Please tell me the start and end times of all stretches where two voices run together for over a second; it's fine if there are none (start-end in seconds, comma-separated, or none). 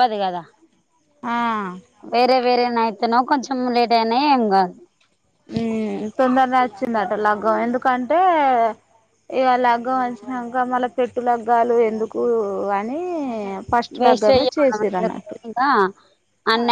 14.0-15.4